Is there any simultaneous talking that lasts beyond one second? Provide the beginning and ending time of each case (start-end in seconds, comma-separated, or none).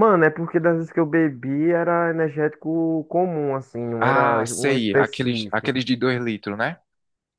4.0-5.7